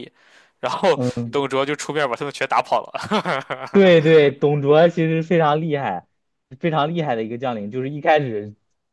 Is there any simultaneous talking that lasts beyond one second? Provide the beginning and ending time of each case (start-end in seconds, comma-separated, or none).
none